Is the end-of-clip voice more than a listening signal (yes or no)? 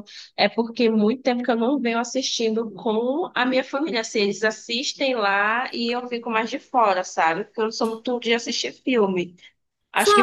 yes